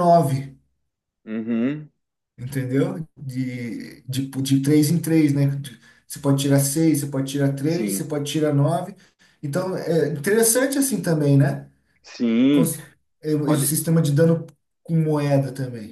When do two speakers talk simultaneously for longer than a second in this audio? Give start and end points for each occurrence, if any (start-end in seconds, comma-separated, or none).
none